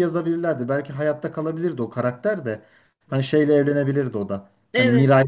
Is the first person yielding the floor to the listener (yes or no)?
no